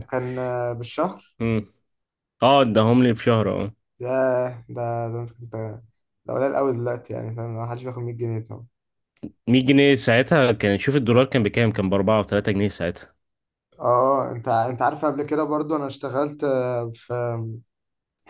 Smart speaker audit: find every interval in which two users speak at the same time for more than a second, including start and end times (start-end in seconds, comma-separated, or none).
none